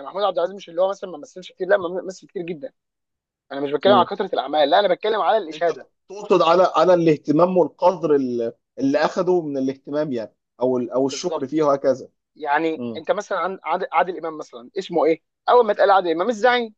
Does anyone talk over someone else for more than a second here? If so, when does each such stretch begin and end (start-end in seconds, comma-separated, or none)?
none